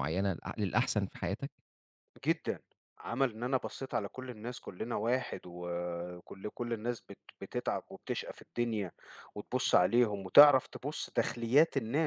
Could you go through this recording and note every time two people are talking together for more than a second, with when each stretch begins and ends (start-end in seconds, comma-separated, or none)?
none